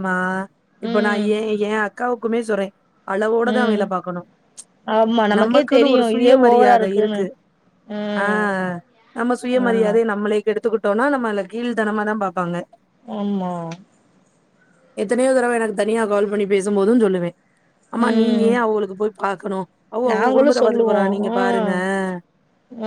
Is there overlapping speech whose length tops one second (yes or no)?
yes